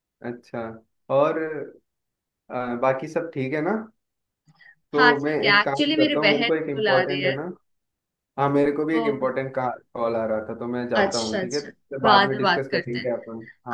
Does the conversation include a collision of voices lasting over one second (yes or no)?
yes